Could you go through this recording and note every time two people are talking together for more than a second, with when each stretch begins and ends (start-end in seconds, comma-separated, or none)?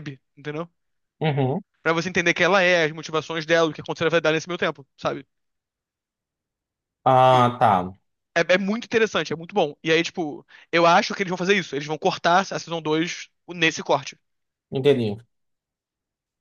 none